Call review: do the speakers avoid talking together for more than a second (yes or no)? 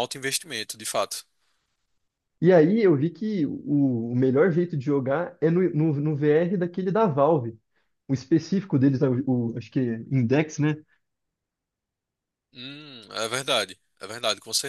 yes